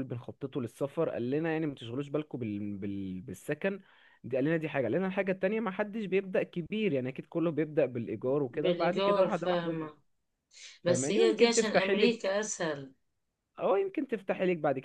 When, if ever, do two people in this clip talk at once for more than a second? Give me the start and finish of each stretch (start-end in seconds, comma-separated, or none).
8.5-9.9, 10.9-12.3